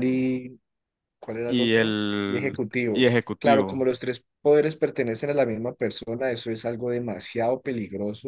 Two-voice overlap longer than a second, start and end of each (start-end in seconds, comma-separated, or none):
1.5-3.8